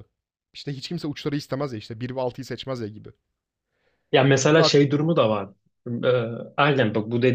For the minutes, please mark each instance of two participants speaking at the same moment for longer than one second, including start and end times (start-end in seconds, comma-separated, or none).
none